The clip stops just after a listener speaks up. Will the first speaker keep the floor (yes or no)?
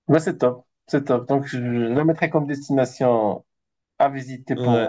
no